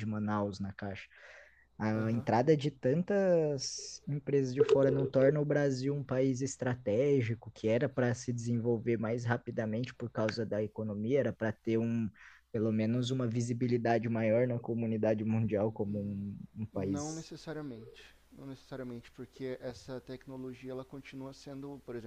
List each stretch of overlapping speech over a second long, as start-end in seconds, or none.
none